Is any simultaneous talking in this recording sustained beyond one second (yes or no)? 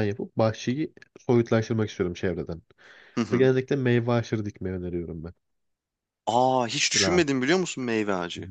no